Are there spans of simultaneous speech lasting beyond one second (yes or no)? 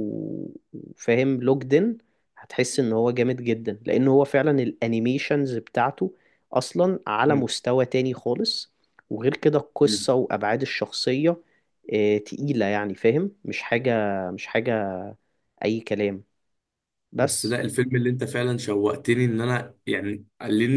no